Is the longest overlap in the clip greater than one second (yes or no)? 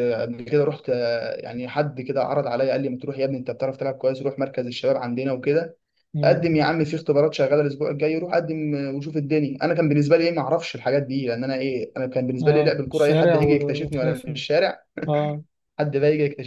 yes